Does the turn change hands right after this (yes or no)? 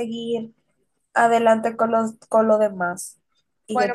yes